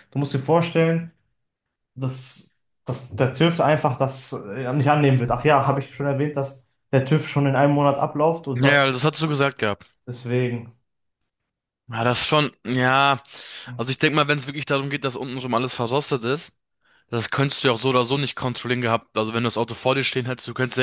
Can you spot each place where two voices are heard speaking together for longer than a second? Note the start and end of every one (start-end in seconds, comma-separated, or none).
none